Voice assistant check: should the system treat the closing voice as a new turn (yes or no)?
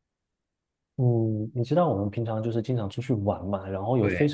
no